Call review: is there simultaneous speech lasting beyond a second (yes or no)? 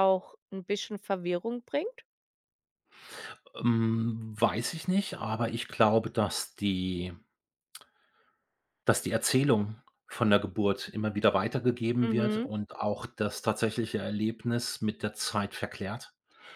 no